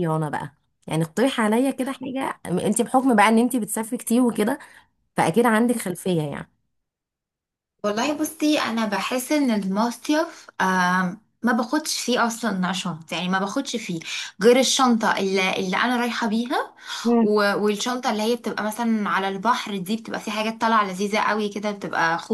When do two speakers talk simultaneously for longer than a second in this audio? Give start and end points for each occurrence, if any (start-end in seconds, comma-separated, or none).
none